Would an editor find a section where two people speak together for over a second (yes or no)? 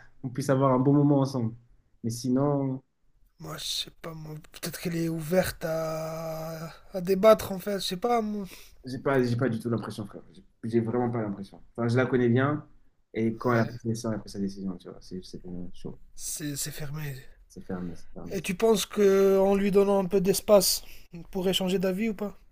no